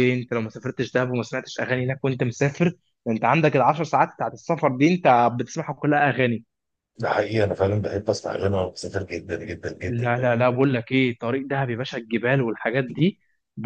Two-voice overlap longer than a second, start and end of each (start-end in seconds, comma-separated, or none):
none